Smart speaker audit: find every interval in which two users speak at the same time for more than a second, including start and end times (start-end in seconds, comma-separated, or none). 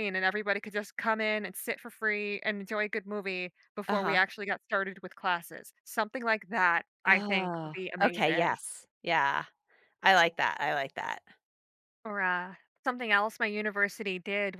7.1-8.6